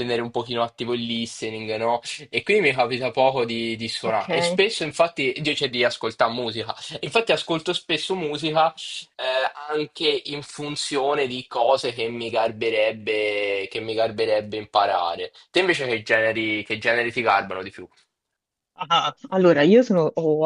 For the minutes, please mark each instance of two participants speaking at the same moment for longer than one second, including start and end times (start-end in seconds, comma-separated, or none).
none